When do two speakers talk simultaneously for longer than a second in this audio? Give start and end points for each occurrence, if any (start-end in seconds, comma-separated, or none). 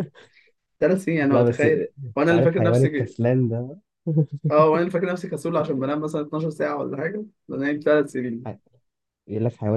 1.3-3.1